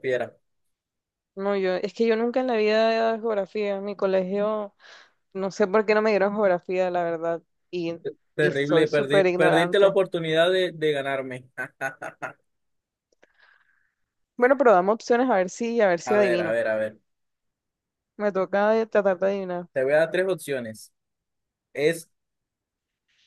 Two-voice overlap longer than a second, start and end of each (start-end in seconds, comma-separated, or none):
8.4-9.9